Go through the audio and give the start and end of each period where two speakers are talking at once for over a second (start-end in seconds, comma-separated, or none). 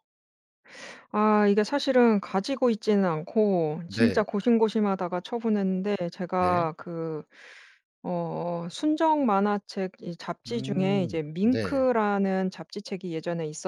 10.5-11.8